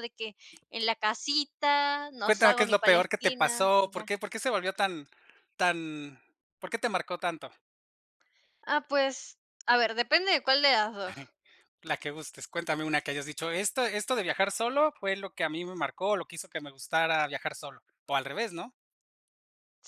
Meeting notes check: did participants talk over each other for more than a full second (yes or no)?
yes